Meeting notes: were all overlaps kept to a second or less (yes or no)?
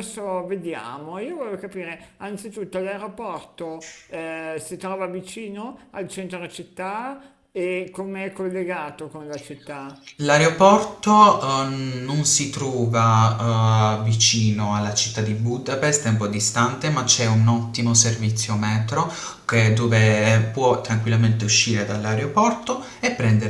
yes